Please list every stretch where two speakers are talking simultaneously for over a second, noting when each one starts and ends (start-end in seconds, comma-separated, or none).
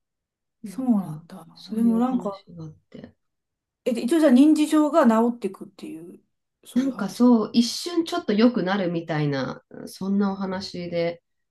0.7-2.4